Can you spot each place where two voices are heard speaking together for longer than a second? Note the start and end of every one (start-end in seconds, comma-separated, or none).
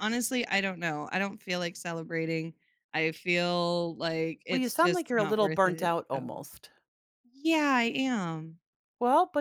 4.5-6.5